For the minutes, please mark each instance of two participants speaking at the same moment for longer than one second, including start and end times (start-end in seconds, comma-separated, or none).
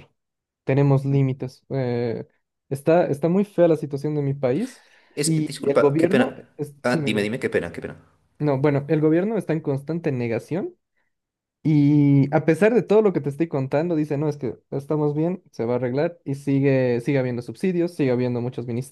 5.2-7.3